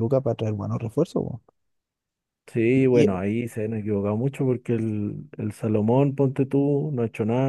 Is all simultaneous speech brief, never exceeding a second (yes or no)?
yes